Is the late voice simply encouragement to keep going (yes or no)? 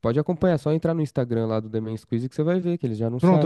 no